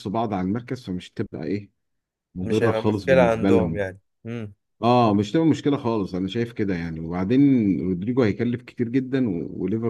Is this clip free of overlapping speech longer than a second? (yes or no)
no